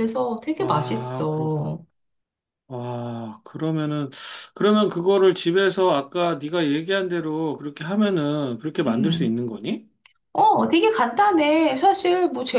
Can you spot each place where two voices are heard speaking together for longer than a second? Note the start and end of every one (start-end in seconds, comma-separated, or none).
0.6-1.8